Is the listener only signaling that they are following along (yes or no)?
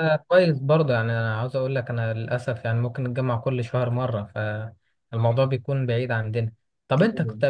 yes